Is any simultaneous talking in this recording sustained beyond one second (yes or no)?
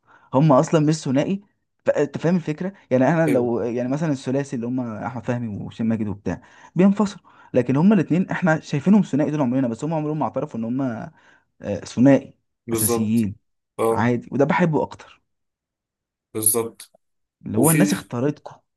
no